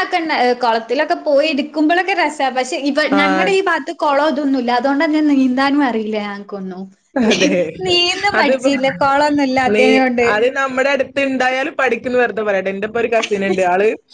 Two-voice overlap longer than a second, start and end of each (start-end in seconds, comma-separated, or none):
none